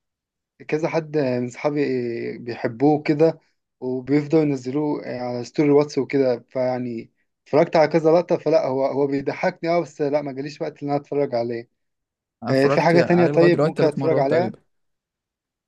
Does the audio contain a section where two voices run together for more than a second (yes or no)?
yes